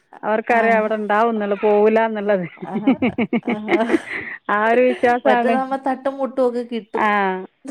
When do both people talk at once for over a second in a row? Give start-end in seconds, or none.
none